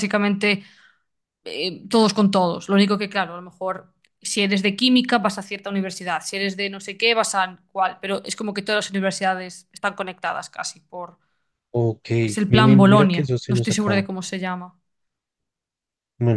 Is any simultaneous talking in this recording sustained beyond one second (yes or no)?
yes